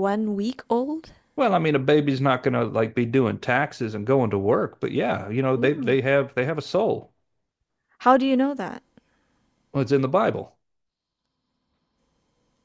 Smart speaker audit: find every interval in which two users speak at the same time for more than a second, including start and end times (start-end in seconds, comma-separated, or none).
none